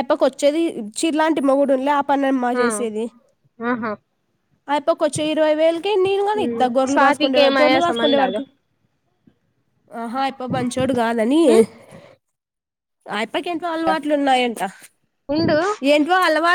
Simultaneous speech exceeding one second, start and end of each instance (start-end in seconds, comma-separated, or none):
6.4-8.4